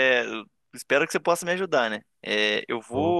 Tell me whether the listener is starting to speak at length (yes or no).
no